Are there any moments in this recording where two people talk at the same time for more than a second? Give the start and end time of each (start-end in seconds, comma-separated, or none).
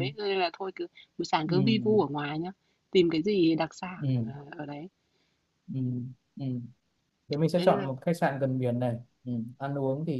none